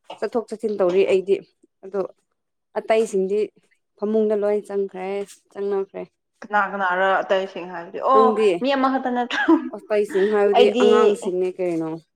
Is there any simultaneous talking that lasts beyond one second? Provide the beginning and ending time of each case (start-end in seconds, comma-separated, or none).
none